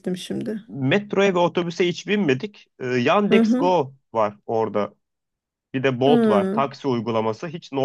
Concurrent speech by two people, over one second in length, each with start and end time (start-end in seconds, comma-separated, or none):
none